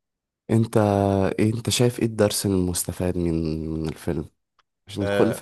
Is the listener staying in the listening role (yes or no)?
yes